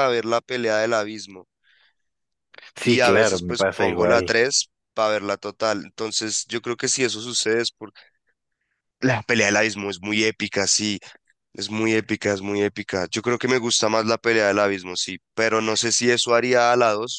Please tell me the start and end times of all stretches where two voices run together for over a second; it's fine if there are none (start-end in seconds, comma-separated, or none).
2.8-4.3